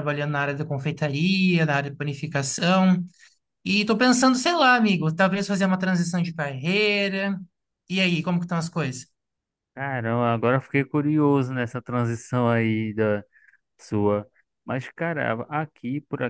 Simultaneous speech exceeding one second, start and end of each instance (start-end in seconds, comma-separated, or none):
none